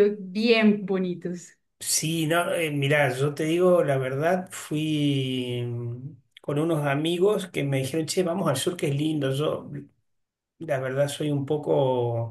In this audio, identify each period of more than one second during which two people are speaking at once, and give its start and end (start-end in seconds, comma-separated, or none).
none